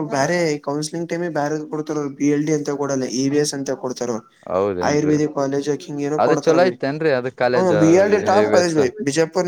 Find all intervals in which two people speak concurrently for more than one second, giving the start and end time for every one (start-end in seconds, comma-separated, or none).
none